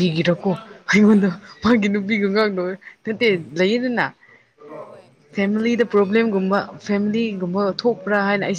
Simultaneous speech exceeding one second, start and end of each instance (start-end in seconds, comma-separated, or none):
5.3-7.5